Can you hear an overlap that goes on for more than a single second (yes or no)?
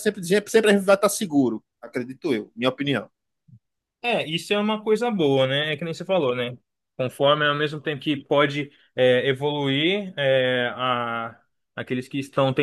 no